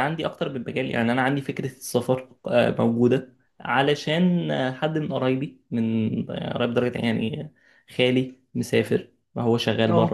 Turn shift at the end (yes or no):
no